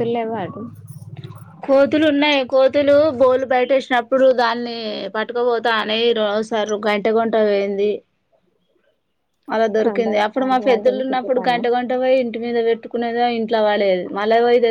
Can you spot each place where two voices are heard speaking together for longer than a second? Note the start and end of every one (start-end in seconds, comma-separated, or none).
10.1-11.6